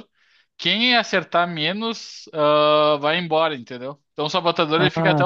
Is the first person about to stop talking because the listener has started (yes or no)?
yes